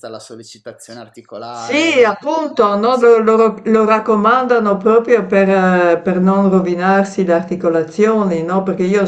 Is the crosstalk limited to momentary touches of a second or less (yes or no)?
no